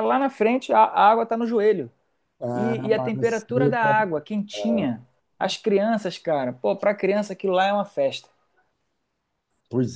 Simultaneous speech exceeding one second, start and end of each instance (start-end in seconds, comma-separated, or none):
2.5-3.7